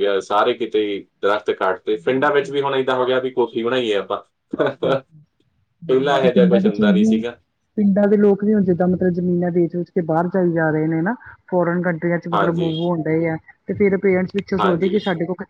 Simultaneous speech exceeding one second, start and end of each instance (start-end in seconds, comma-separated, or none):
5.9-7.1